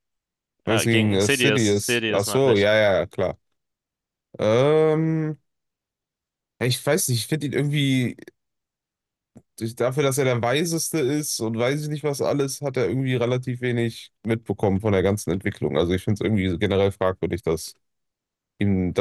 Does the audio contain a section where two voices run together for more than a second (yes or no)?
yes